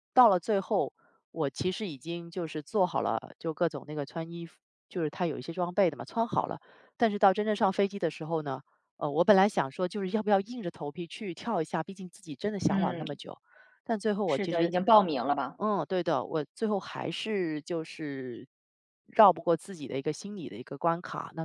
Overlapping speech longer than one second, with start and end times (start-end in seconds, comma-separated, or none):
none